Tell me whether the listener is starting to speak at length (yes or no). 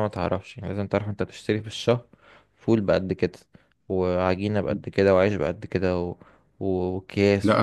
yes